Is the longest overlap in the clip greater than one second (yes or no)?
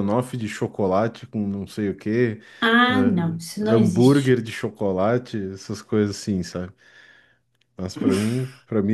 yes